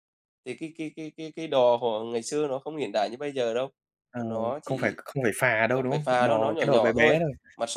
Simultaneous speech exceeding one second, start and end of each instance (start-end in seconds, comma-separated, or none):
5.7-7.2